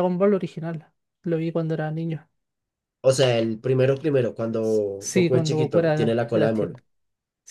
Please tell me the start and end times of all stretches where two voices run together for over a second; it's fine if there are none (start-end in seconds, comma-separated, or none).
5.1-6.8